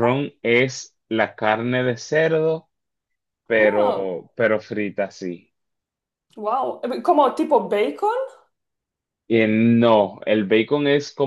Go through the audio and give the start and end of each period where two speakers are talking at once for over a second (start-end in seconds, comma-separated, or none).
none